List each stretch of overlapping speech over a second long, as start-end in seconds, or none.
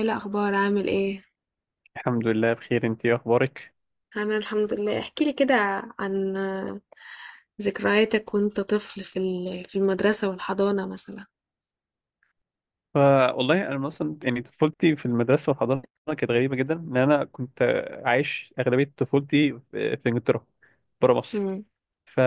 none